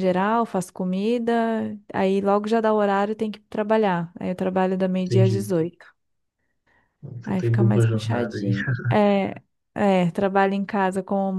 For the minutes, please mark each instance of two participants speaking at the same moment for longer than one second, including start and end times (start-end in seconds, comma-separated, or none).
7.2-8.5